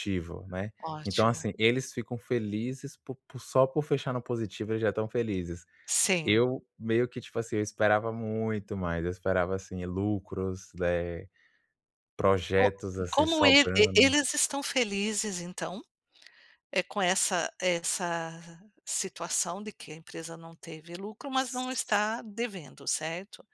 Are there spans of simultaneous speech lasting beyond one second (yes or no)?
yes